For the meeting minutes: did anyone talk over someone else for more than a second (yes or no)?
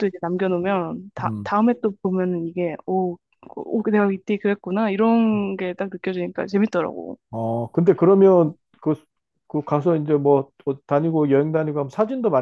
no